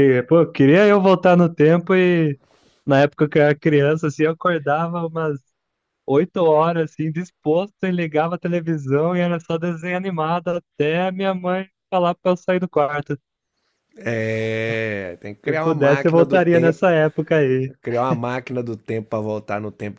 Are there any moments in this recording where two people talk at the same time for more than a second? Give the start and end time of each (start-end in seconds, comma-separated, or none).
15.5-16.9